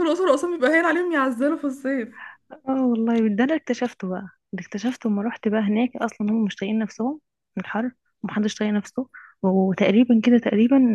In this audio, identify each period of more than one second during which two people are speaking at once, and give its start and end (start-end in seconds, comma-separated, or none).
none